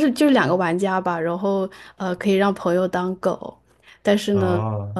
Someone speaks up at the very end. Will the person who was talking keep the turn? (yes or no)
yes